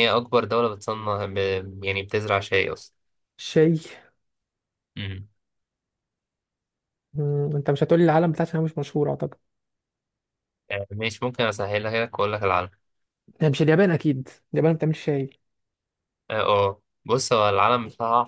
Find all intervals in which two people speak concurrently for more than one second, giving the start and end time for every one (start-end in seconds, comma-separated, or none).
none